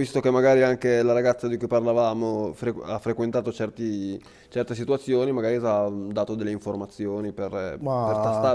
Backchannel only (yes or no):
yes